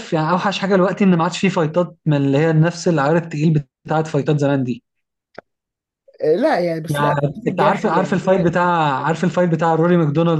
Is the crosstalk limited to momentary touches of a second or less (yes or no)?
no